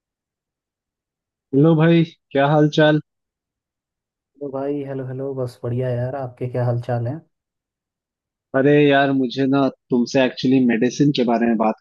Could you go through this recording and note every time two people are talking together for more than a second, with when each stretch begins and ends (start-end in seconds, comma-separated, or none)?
none